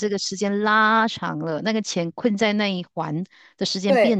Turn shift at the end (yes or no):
yes